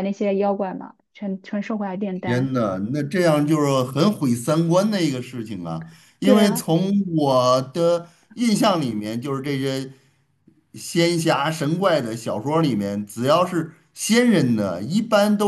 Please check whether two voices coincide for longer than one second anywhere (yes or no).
no